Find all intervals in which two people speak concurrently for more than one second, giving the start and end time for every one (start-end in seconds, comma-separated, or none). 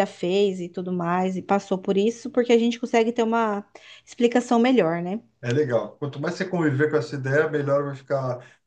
none